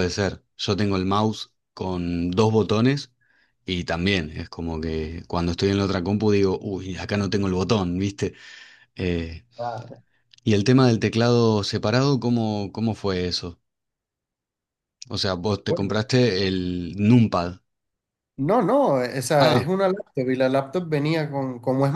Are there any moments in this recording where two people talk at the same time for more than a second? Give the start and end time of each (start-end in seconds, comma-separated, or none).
none